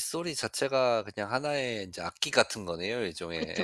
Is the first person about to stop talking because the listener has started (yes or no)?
yes